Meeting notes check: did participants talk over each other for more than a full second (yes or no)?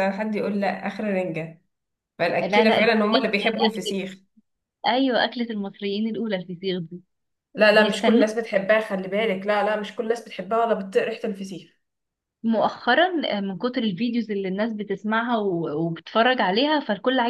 yes